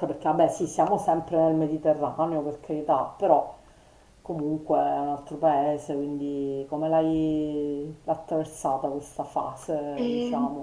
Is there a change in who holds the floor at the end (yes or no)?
yes